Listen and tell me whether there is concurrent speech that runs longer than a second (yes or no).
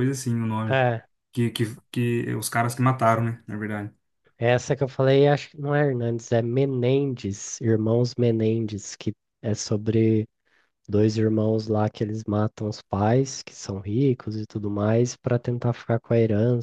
no